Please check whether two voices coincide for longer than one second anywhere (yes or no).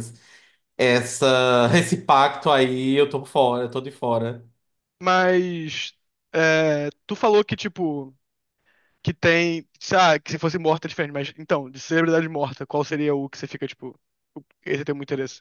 no